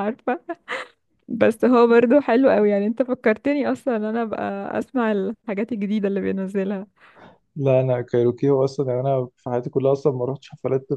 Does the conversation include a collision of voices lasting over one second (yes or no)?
no